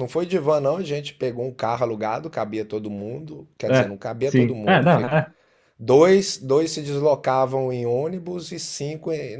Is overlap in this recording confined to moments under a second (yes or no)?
no